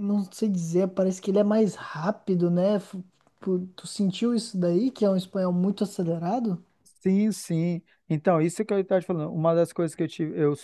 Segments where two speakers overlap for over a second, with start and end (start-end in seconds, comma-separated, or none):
none